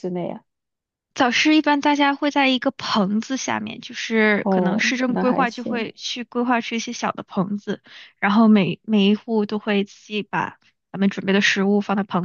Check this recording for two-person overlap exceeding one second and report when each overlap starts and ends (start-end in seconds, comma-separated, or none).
4.4-5.9